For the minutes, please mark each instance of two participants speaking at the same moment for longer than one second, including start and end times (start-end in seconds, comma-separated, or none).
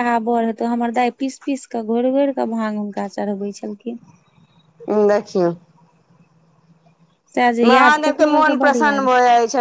7.6-9.1